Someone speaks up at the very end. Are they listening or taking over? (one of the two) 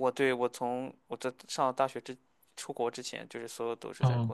taking over